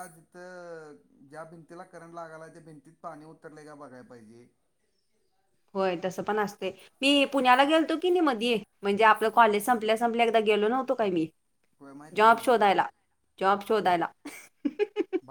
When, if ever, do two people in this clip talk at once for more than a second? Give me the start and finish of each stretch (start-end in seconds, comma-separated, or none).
none